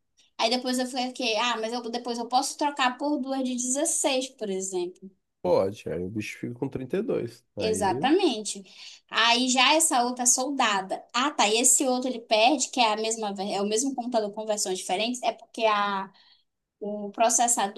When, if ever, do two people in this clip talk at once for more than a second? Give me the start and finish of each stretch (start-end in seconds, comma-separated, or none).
none